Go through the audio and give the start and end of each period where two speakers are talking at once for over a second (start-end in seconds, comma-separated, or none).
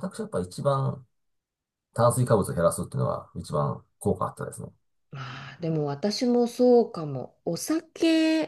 none